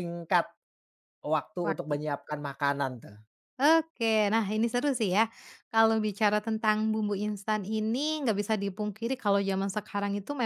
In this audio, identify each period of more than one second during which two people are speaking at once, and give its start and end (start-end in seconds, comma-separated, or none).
none